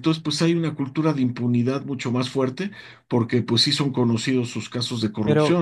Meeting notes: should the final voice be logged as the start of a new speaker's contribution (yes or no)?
yes